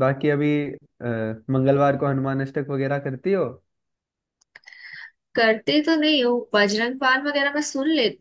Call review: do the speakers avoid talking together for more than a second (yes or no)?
yes